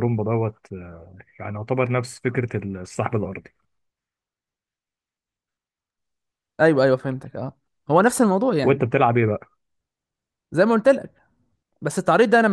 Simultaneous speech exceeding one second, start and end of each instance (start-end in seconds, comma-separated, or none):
none